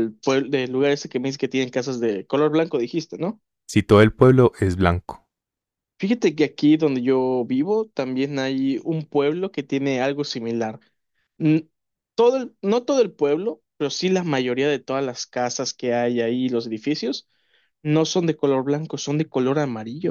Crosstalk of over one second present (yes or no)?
no